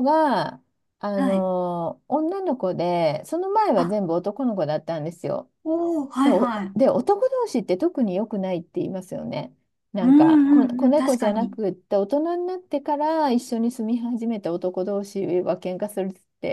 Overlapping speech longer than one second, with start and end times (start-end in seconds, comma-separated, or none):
10.0-11.6